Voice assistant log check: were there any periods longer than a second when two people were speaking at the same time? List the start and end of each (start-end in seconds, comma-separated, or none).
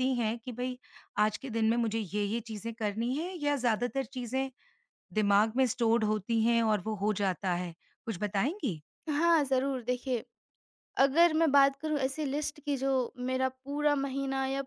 none